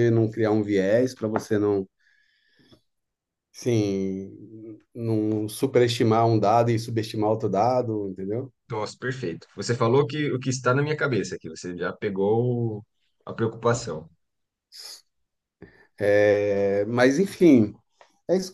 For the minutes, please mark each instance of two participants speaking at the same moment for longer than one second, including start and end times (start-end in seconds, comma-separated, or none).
none